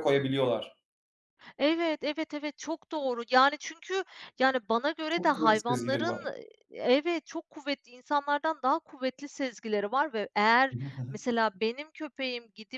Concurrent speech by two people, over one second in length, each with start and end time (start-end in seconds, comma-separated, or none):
5.1-6.3